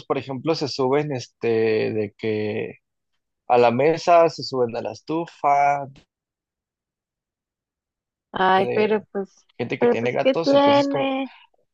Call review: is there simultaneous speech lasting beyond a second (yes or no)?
yes